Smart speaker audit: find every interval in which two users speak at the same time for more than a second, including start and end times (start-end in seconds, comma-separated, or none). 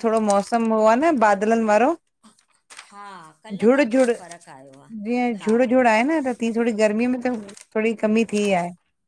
none